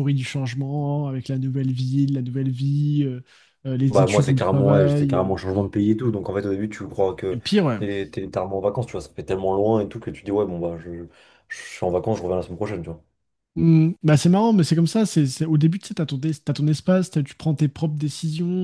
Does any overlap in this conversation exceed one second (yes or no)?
yes